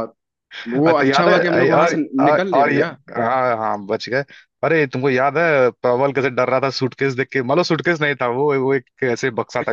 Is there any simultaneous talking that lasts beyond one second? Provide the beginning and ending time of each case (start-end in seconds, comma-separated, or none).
0.9-3.0